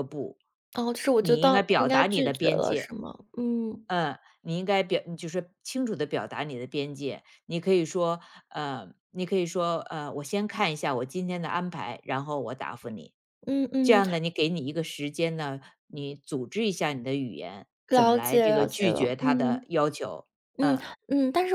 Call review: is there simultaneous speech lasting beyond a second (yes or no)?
yes